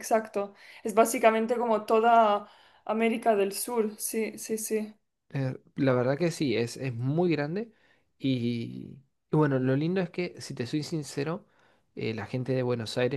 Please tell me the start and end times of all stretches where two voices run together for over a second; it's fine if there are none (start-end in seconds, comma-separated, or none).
none